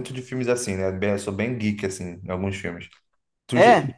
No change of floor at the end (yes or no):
yes